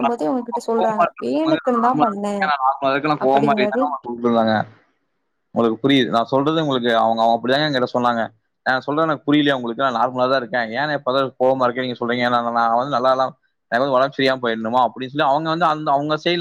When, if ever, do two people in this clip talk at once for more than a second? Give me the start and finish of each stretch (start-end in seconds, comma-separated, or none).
0.8-2.4